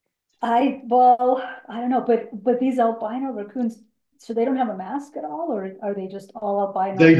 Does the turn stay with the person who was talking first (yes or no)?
no